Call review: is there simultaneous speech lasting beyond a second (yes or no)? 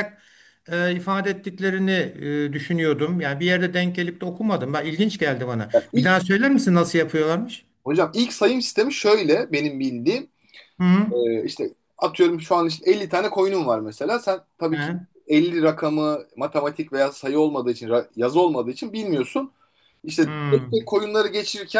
no